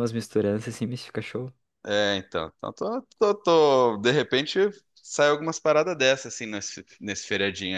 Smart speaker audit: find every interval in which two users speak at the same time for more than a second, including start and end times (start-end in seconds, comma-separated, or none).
none